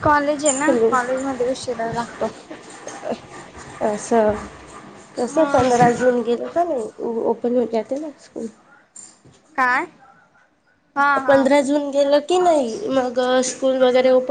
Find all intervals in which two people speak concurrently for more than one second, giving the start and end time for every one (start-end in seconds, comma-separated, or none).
none